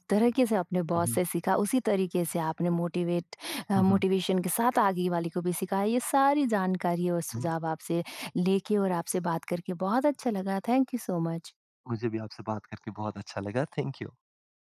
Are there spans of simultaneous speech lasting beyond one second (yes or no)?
no